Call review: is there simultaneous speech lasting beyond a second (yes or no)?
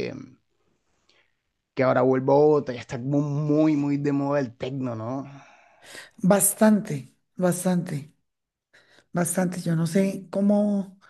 no